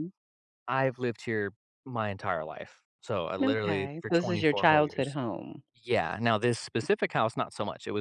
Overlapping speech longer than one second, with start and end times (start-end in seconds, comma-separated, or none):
3.4-5.2